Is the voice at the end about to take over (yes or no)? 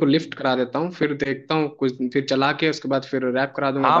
yes